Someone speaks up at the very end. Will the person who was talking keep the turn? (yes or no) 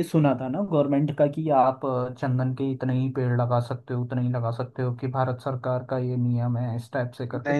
no